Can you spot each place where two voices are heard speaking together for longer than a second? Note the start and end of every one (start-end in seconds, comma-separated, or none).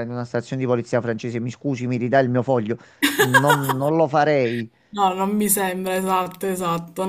none